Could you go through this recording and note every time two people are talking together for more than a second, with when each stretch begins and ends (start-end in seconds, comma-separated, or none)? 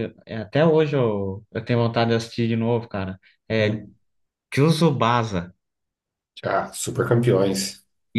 none